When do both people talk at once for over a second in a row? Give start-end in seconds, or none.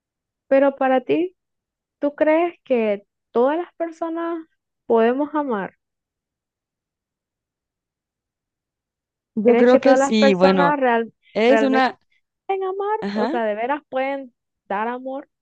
9.4-10.7